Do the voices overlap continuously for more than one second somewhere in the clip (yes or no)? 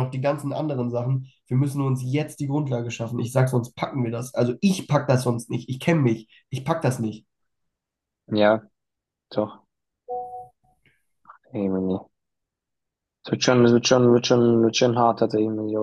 no